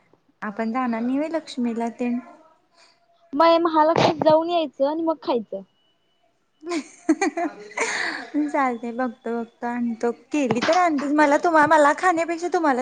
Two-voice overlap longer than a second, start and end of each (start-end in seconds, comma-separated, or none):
none